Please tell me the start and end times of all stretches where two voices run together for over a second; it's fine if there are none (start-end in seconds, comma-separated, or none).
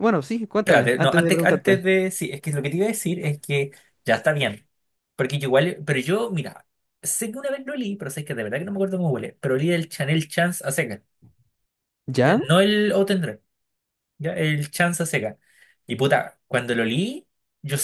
0.6-1.9